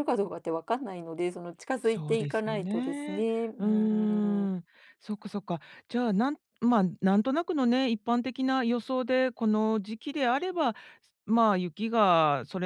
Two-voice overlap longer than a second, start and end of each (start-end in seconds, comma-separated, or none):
1.8-3.6